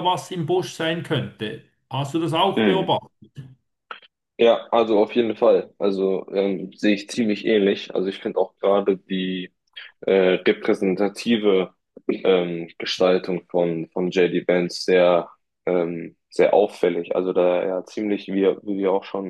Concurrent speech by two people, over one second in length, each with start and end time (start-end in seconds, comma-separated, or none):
none